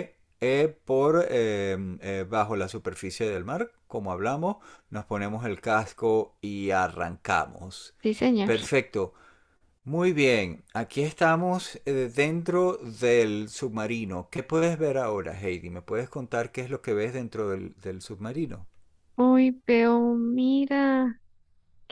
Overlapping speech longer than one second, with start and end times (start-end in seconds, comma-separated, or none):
none